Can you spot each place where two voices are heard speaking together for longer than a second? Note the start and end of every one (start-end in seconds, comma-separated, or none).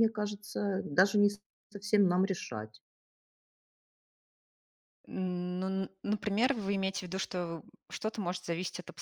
none